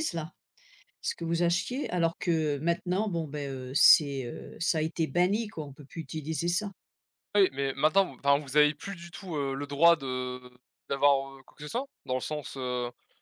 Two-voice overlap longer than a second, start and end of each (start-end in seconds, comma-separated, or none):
none